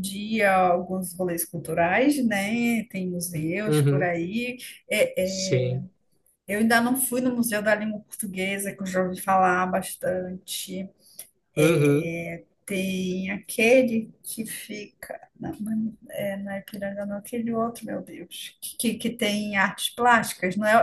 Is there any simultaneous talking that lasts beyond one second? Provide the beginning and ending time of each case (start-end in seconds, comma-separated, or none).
none